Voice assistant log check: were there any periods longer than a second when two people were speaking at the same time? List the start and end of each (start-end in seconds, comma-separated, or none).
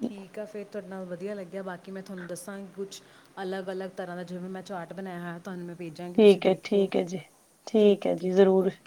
none